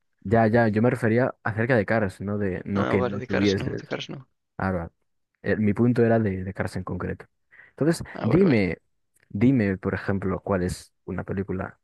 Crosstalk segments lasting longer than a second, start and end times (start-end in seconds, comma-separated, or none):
2.7-4.0